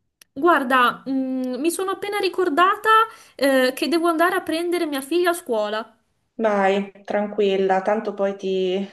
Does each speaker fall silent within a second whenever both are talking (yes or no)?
yes